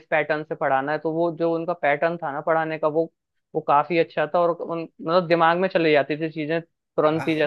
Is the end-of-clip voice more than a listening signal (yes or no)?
yes